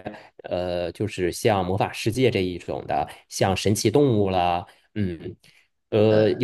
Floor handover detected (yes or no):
no